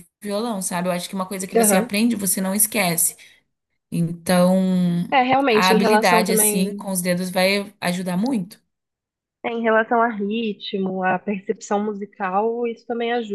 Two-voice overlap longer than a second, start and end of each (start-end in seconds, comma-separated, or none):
5.5-6.8